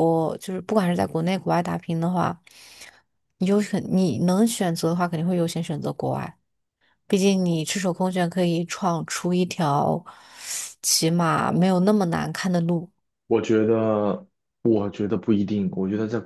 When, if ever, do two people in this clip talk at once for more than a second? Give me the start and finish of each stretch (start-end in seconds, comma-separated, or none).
none